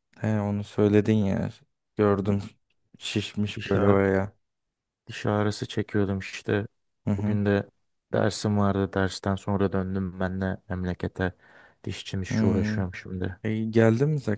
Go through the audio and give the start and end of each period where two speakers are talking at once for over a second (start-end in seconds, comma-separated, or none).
none